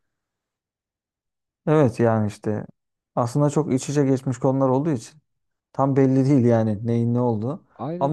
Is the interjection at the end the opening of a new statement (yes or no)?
no